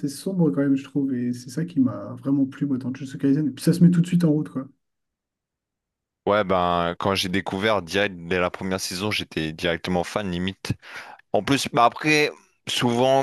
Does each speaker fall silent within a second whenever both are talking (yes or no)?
yes